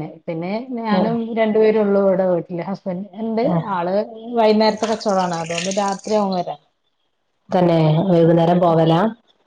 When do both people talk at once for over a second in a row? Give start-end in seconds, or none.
none